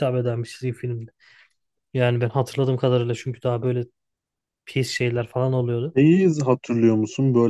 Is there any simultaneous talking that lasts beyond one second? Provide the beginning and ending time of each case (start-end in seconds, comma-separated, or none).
none